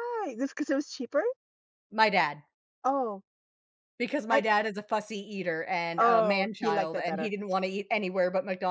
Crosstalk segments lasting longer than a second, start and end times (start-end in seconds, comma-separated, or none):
6.0-7.3